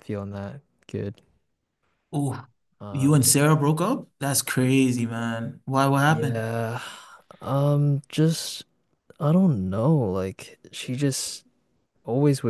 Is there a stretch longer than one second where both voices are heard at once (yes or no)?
no